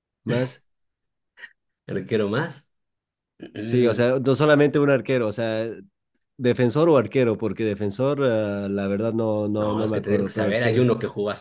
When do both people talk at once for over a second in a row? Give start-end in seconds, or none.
9.6-10.8